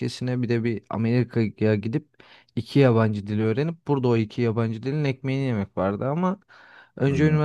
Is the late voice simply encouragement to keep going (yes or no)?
yes